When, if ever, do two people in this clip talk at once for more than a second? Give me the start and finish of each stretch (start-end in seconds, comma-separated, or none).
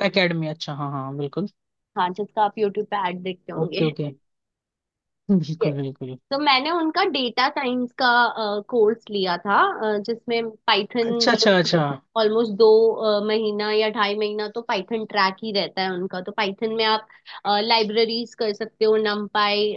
none